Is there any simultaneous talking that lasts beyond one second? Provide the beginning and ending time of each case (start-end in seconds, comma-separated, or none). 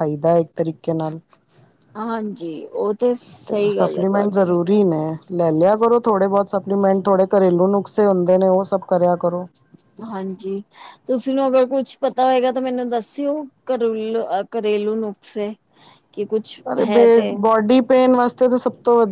none